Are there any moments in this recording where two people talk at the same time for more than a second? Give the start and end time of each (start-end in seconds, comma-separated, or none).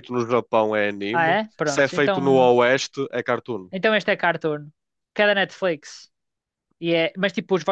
1.1-2.5